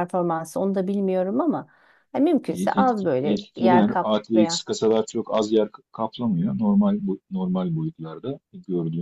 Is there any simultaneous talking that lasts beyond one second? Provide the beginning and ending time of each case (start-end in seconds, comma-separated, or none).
2.5-4.6